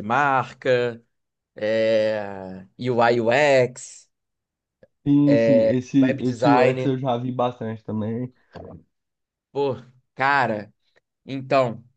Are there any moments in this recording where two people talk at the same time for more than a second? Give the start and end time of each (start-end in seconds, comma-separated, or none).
5.3-7.0